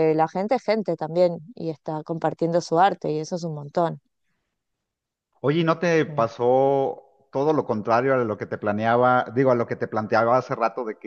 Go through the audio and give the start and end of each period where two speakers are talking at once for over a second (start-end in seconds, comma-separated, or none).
none